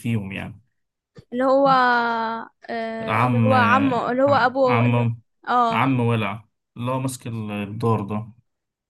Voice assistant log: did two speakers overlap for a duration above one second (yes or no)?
no